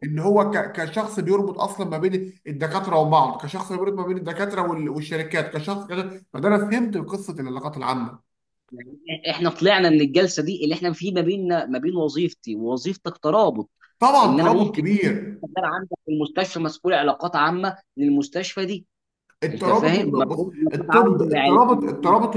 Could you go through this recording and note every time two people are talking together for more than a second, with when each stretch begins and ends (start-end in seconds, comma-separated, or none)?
19.5-21.6